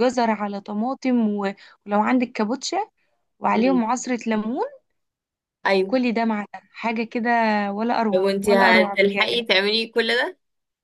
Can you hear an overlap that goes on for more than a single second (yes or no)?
yes